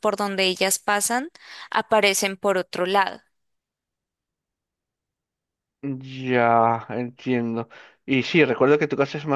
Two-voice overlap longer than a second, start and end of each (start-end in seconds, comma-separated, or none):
none